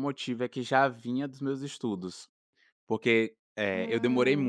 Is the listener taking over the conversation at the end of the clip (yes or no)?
no